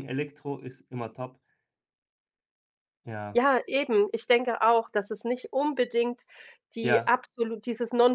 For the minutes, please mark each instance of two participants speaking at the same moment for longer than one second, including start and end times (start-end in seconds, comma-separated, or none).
none